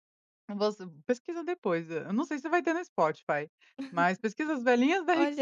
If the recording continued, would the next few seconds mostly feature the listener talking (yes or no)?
yes